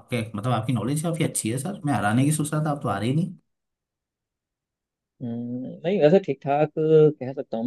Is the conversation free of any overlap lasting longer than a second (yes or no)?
yes